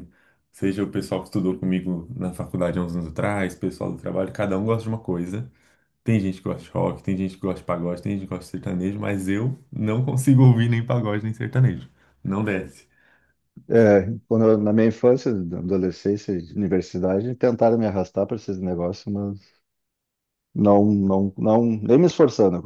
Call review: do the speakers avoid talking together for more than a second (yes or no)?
yes